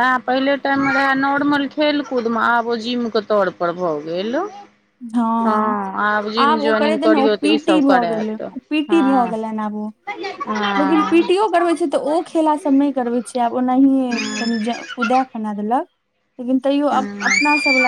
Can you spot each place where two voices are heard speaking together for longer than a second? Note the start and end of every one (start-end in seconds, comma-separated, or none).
6.4-9.2